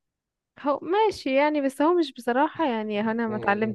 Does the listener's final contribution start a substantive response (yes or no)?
yes